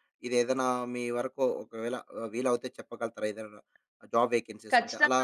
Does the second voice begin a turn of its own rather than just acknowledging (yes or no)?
yes